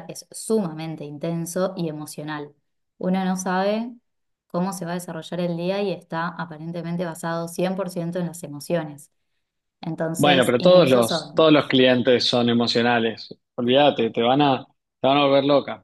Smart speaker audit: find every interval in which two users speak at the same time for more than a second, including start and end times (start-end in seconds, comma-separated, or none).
10.2-11.5